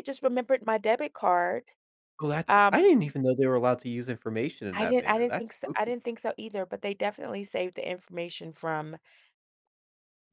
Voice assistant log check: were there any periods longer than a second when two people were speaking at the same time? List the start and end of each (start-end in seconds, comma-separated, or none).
4.8-6.0